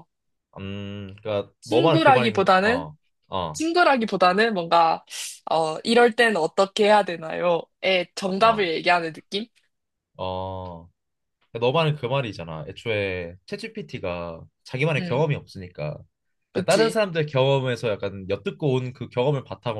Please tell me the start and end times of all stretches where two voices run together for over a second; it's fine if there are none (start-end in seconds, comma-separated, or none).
1.6-2.9